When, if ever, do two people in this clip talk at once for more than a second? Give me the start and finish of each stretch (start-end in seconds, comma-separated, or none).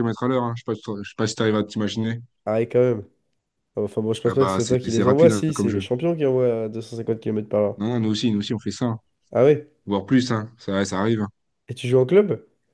4.2-5.8